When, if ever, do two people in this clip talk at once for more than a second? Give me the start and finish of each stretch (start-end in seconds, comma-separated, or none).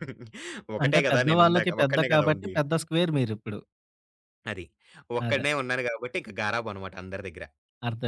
0.8-2.5